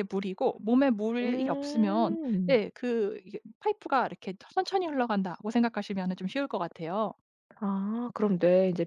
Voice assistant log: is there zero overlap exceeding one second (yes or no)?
no